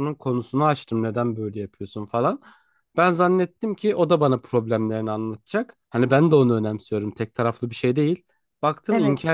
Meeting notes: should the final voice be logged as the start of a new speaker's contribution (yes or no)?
no